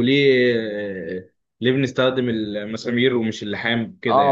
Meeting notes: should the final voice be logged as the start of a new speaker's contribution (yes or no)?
yes